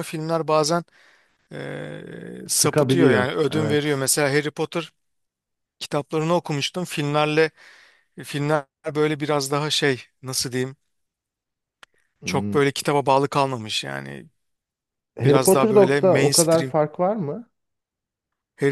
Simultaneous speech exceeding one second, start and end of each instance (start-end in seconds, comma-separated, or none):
2.5-4.1, 15.2-16.7